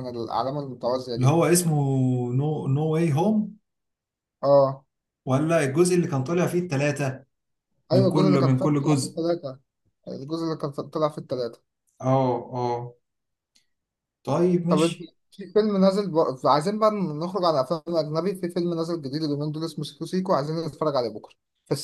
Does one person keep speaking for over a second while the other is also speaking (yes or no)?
yes